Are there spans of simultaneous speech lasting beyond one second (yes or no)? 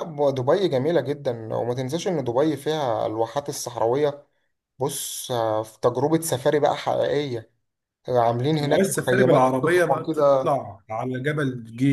yes